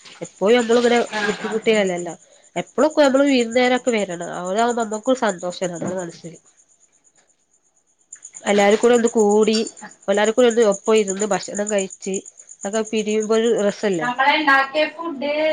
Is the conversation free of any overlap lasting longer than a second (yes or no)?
yes